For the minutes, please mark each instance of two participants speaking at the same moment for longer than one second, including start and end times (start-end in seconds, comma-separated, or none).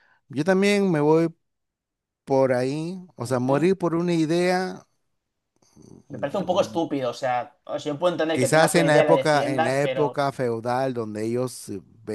8.3-10.2